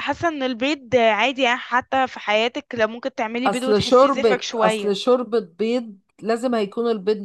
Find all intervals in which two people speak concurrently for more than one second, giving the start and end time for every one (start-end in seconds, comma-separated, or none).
3.5-4.9